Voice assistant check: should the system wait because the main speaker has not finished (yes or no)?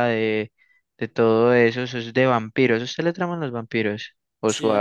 no